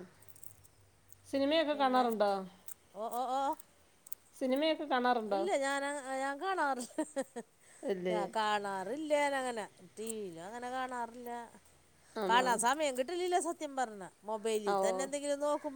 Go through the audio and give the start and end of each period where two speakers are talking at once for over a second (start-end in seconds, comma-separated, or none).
none